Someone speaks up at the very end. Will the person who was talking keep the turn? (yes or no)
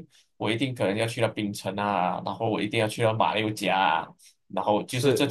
yes